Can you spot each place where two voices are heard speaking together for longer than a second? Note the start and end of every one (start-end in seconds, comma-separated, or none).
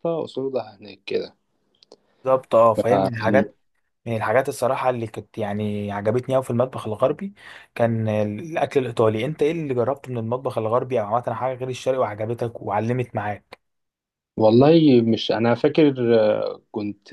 none